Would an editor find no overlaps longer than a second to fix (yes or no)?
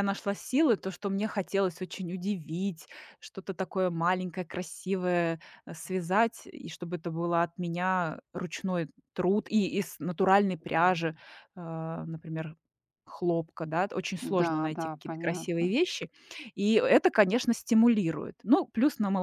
no